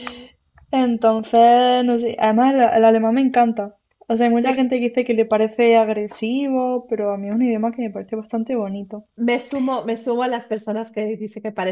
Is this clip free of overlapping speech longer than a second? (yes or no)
yes